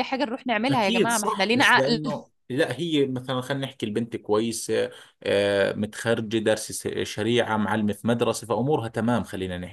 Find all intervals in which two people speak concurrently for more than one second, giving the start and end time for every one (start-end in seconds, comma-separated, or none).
0.7-2.0